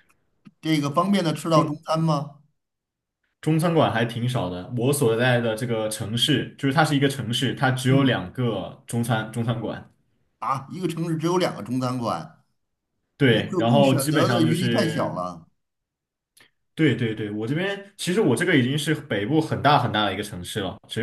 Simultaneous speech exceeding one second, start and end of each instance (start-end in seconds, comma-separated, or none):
13.2-15.2